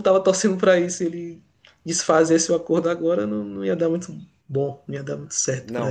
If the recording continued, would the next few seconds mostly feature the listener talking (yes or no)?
yes